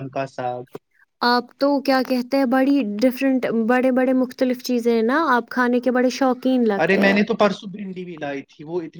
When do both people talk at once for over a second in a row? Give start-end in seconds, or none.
none